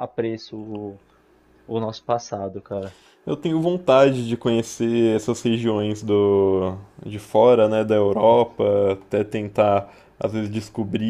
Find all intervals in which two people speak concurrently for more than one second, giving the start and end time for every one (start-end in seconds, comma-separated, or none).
none